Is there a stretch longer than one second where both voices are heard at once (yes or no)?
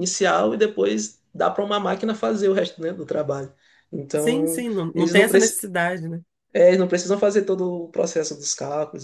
yes